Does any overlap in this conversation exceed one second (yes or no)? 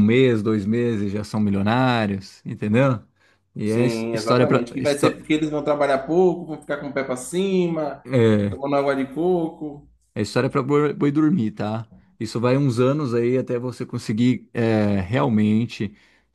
yes